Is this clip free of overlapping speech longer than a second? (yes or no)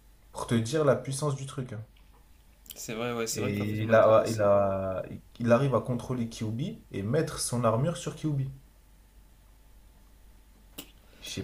no